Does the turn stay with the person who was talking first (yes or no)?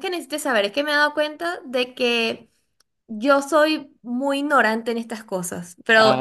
yes